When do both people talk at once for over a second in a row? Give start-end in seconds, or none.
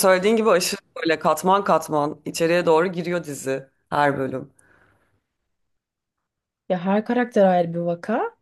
none